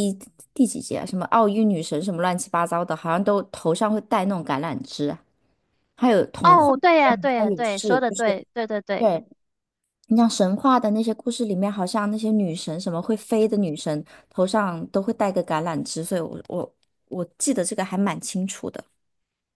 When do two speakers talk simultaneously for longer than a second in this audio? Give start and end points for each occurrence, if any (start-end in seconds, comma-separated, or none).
6.4-8.3